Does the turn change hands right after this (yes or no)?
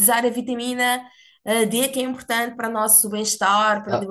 no